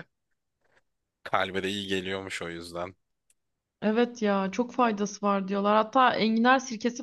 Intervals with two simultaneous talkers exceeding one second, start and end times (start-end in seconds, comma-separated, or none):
none